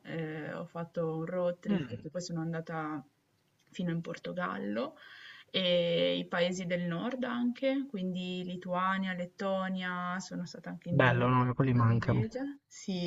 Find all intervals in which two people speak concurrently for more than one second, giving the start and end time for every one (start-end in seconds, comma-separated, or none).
10.9-12.3